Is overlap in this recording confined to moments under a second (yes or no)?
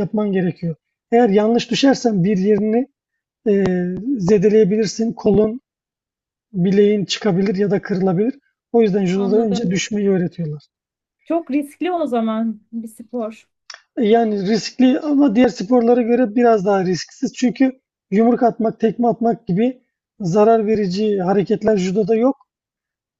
yes